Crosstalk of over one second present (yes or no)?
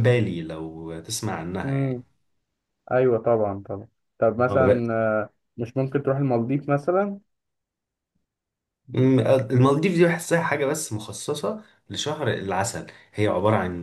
no